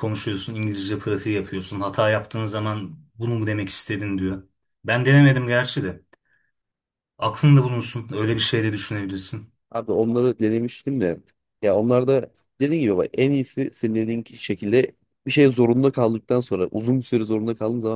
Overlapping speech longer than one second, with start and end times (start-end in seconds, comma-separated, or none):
none